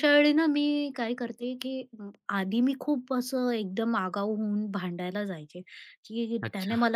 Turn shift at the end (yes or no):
no